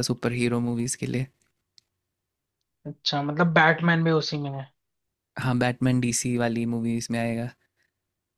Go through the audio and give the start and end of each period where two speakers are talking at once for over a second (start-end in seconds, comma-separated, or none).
none